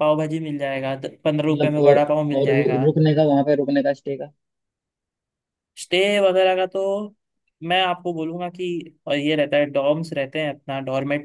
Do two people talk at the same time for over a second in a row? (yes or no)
yes